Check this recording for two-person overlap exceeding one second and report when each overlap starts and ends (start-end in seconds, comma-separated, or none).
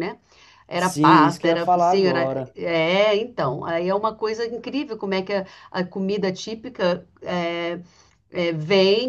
0.8-2.5